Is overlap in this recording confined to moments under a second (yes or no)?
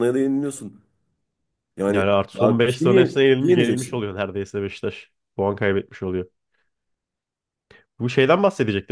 no